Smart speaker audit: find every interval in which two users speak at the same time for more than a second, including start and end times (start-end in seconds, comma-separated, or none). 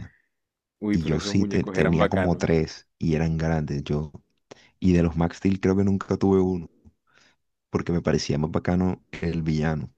0.9-2.6